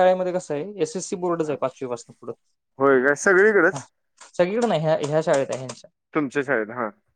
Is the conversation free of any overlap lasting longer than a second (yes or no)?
yes